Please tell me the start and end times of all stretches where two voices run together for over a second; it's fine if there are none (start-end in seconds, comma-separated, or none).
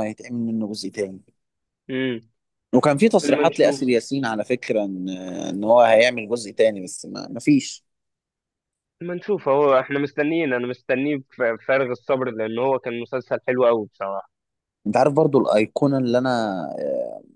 none